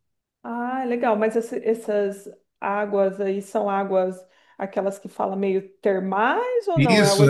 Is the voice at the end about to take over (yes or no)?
yes